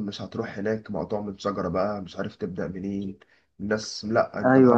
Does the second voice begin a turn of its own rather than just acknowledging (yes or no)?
yes